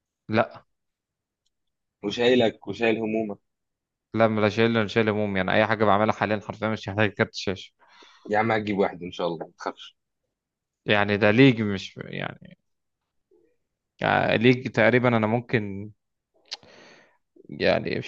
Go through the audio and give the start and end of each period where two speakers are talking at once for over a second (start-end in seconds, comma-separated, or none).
none